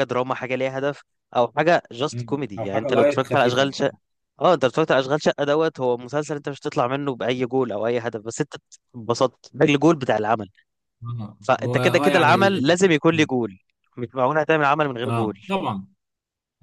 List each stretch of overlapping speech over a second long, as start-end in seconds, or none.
2.1-3.7, 11.4-12.9